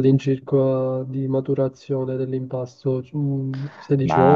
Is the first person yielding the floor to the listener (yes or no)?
yes